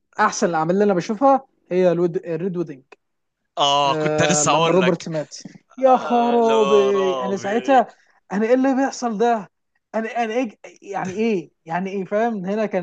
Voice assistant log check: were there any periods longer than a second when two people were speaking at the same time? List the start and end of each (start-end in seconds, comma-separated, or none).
3.8-5.1, 5.9-7.8